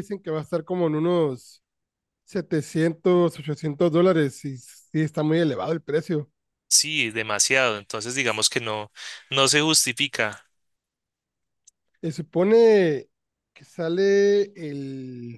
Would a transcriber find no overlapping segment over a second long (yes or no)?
yes